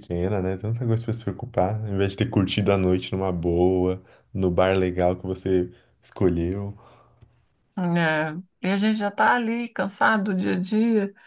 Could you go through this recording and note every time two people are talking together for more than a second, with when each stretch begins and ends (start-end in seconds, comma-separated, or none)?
none